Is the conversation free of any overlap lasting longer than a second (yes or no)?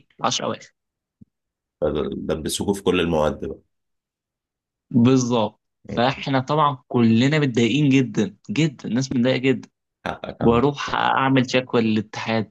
yes